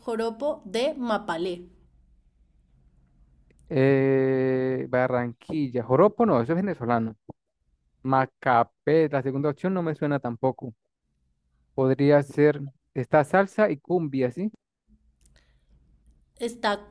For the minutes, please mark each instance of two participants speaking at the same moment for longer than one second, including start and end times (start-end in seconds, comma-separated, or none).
none